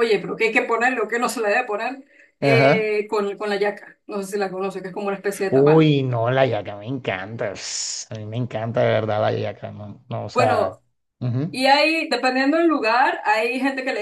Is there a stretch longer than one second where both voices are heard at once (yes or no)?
no